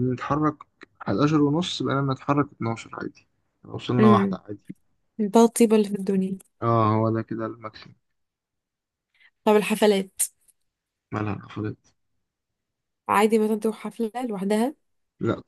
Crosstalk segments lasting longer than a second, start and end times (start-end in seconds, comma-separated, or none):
none